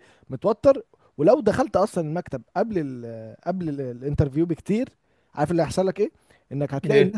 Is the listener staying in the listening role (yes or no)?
yes